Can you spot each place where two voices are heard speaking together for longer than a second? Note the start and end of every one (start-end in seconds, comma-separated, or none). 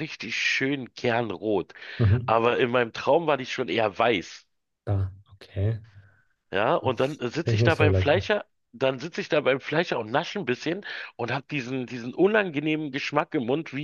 6.8-8.3